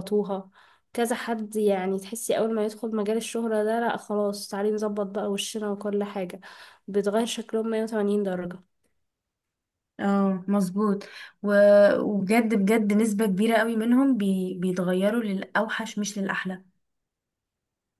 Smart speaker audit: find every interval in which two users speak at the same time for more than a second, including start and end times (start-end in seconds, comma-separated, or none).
none